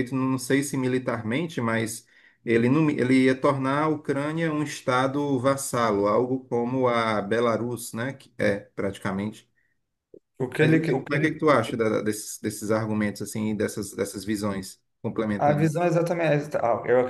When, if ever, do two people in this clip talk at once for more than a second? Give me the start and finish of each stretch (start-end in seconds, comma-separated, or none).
10.6-11.8